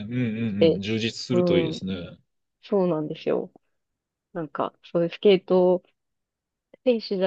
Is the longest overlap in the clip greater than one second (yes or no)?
no